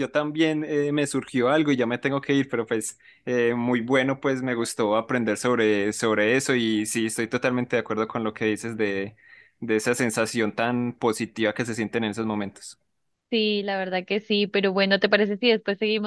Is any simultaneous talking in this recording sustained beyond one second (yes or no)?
no